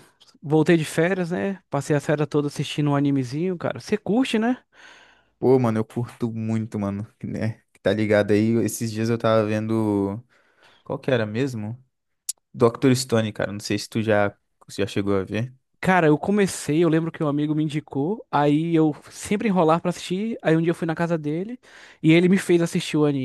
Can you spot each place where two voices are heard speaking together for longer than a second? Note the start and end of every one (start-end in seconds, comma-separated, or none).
none